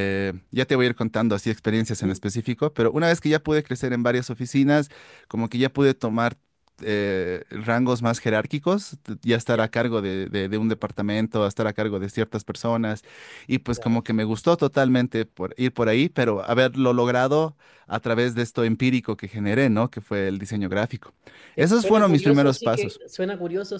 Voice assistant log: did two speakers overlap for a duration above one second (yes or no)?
yes